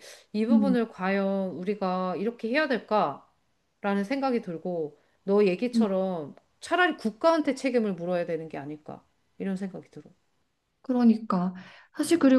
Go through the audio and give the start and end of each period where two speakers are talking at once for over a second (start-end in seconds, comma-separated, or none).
none